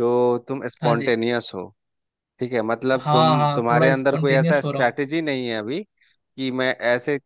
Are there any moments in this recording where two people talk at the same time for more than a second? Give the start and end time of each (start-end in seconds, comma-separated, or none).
3.0-5.1